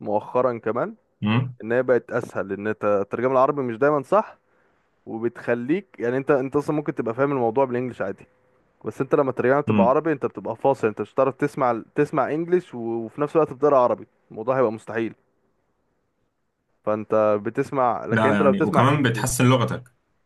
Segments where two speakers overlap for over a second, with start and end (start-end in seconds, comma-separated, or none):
18.1-19.4